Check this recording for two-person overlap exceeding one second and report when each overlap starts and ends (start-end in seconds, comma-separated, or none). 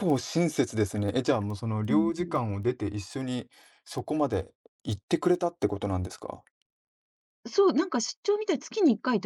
none